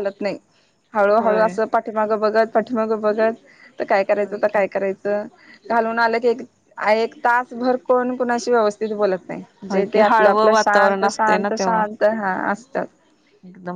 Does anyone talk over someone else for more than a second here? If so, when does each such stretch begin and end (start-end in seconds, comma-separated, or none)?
9.7-11.8